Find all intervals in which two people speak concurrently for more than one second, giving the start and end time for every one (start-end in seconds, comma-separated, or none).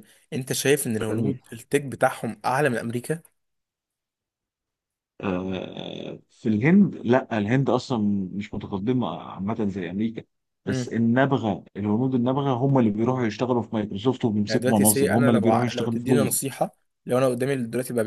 14.5-16.4